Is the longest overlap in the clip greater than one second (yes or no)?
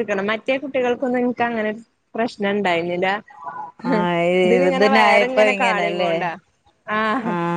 yes